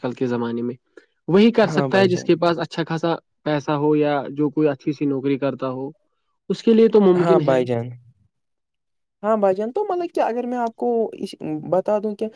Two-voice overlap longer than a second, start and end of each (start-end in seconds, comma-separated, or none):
none